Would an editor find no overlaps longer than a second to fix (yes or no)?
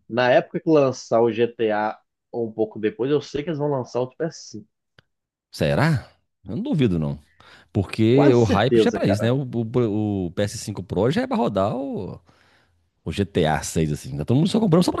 no